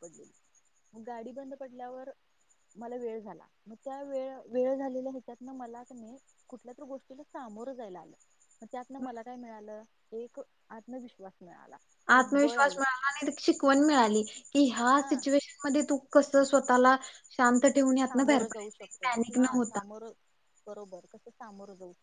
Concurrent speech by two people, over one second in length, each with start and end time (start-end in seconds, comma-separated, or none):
18.1-19.8